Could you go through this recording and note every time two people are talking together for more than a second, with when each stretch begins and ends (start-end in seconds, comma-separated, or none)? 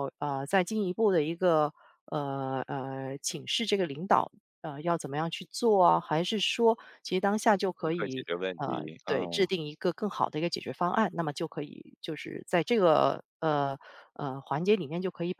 7.8-9.5